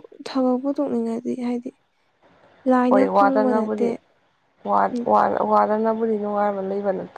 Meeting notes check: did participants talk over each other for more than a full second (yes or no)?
no